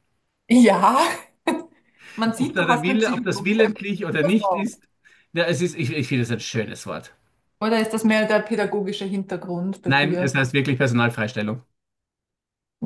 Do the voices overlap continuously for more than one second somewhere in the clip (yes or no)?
yes